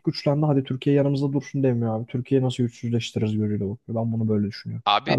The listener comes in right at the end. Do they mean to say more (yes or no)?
yes